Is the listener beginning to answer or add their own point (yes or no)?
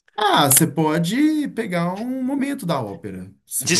yes